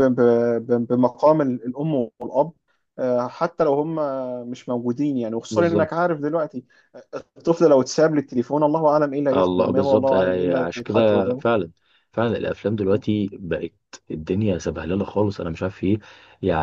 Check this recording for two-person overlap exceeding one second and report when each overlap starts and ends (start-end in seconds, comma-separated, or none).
9.3-11.6